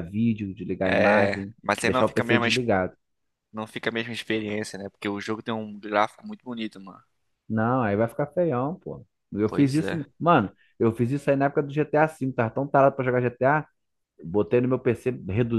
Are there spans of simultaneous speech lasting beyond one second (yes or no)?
yes